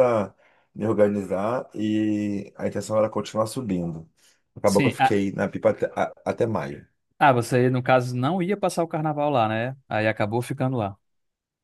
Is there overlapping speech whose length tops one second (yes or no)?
no